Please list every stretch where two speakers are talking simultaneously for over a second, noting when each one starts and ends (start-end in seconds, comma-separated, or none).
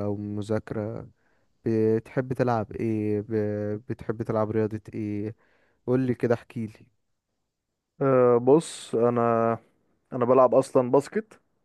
none